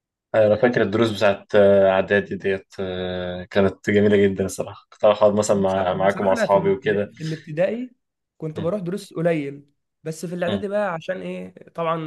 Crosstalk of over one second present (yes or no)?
yes